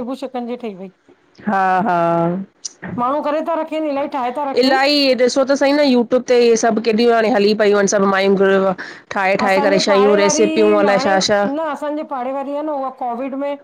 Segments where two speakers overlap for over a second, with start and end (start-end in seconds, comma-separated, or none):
9.4-11.1